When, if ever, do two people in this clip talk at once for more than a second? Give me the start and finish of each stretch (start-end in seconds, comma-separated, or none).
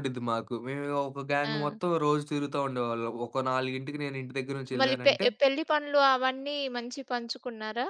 none